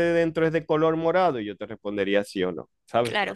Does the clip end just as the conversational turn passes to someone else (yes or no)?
yes